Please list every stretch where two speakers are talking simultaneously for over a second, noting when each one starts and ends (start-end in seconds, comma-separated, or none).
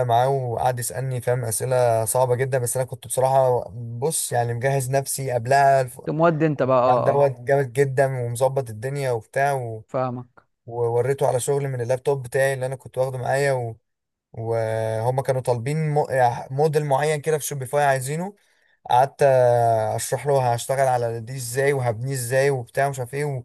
none